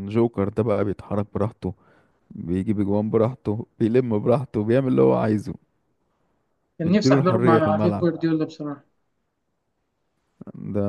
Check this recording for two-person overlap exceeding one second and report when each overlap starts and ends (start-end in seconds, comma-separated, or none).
6.8-8.1